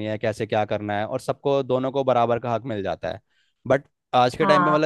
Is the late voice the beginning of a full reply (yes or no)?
no